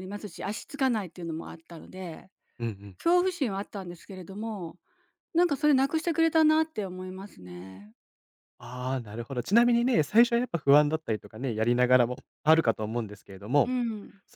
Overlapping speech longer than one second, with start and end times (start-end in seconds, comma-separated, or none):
none